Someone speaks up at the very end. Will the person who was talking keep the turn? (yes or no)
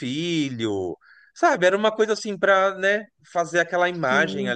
yes